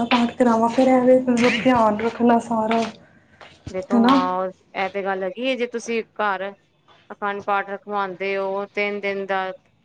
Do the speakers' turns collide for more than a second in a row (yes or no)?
no